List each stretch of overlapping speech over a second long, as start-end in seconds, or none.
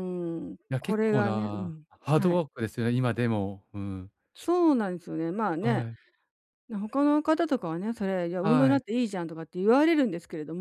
0.7-2.4